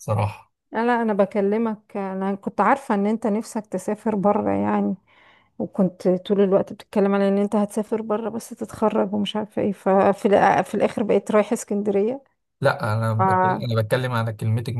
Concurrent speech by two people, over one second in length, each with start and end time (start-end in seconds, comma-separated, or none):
none